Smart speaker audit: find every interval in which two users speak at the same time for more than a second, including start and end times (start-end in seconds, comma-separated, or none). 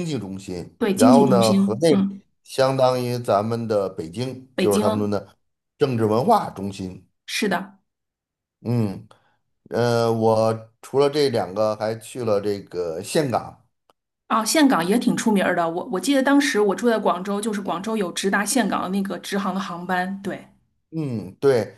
0.8-2.0